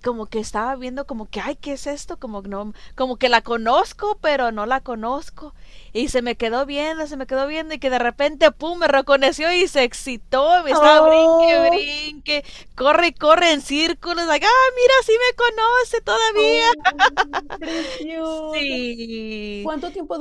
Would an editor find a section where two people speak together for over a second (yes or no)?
yes